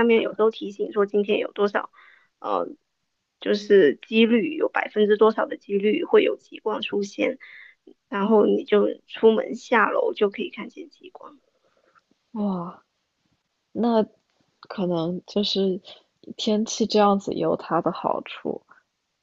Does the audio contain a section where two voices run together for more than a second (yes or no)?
no